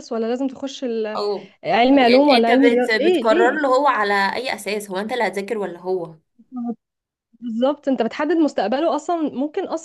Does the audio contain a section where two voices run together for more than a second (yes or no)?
yes